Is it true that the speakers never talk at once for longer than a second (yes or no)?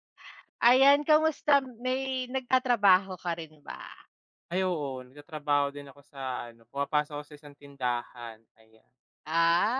yes